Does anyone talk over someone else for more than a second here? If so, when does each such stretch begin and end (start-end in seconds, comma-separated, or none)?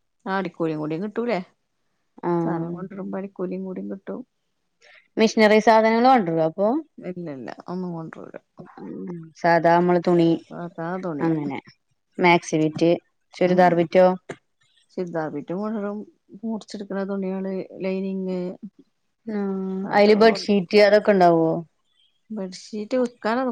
none